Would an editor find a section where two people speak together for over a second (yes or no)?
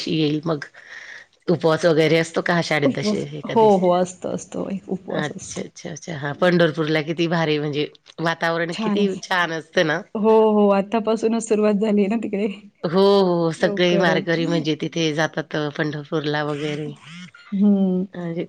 yes